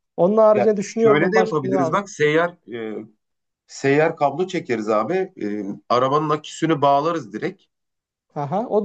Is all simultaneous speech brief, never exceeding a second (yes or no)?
no